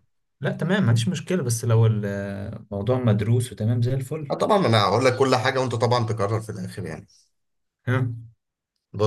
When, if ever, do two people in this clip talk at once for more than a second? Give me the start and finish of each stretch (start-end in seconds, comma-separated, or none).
none